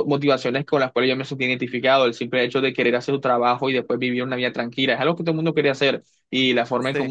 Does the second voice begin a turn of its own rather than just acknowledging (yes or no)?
no